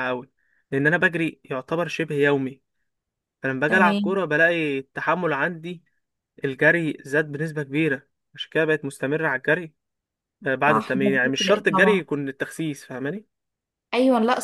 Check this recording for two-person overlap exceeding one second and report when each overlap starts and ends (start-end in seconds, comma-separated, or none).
10.7-12.1